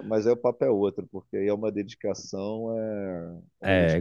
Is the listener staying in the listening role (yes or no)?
no